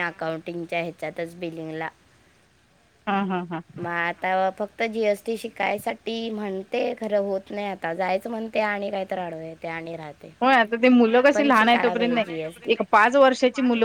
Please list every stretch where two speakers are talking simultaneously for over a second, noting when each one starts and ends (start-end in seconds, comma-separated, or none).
11.3-12.8